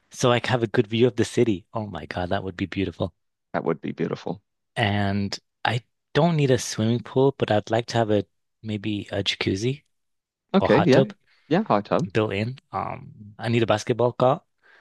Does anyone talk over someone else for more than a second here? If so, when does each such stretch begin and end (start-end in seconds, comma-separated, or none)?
none